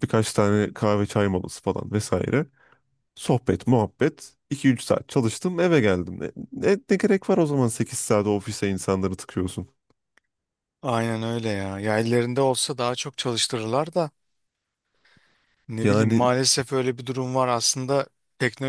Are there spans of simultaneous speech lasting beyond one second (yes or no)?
no